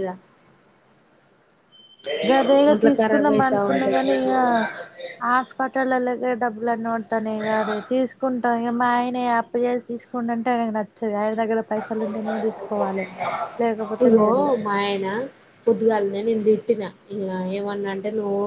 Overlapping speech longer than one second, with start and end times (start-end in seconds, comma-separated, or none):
2.8-4.3